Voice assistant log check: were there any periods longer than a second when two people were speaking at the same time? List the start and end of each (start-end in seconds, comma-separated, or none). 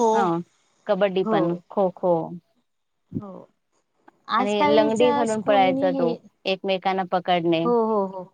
4.4-6.2